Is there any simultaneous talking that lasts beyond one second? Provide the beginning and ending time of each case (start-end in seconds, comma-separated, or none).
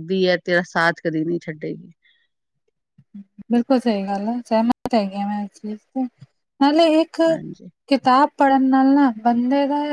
none